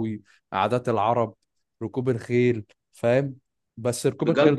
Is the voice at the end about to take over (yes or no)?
yes